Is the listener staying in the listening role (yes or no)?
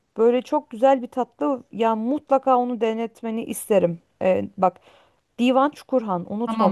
no